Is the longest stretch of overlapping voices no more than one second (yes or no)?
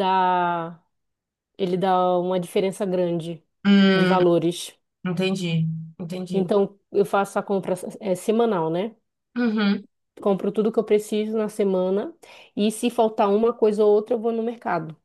yes